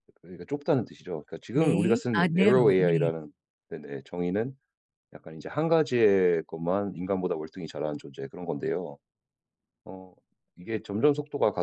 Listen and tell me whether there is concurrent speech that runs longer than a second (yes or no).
yes